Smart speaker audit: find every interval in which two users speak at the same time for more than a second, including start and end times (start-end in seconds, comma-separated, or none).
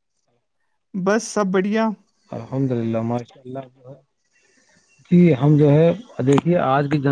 none